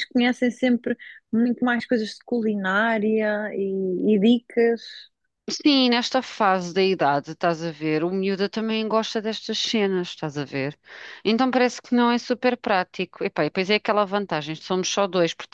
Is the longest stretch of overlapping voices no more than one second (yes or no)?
yes